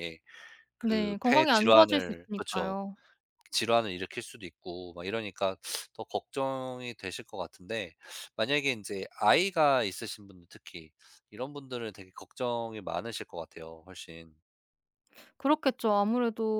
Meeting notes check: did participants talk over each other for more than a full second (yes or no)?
yes